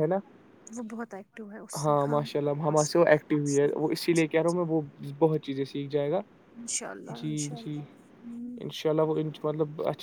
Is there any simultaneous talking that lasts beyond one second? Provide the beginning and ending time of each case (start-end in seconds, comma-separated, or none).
2.6-4.2